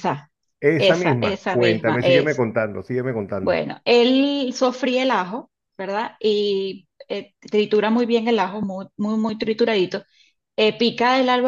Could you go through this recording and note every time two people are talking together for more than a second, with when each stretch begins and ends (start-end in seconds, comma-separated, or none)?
0.8-2.4